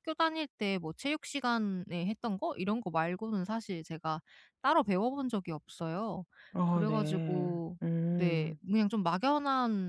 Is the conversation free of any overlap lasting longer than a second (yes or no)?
no